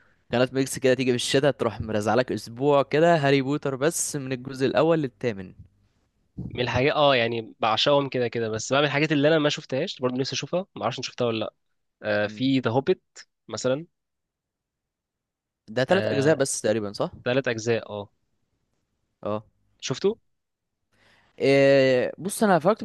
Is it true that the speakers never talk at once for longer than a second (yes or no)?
yes